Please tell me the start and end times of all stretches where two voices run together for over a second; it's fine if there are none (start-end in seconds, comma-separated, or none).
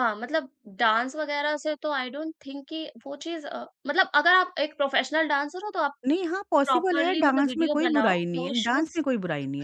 6.7-9.0